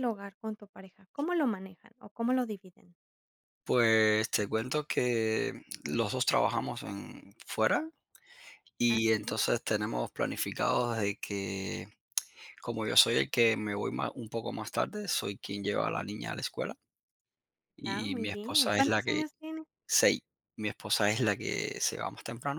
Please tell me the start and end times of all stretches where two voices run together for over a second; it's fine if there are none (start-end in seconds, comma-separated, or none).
17.9-19.2